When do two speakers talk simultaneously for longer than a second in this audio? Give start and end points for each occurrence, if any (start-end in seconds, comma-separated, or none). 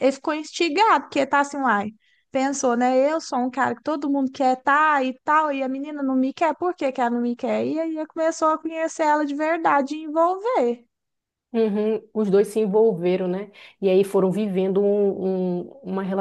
none